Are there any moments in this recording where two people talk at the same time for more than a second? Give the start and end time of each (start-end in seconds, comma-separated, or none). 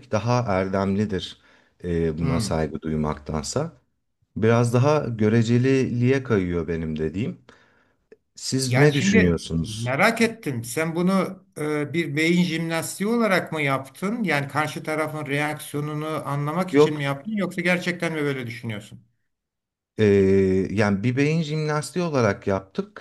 8.7-9.9